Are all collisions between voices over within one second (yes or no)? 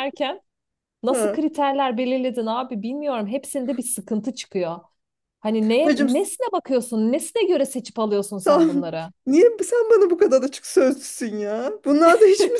yes